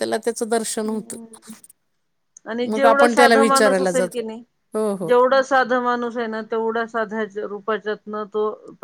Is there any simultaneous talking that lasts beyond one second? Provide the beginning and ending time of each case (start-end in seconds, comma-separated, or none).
2.7-4.2